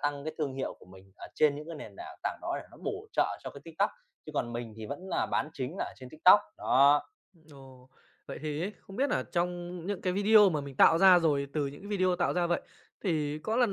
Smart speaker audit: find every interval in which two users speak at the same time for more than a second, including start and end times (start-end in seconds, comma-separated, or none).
none